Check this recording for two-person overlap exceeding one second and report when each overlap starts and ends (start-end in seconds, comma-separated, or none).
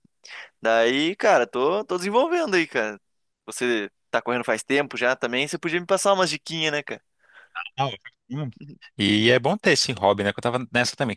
none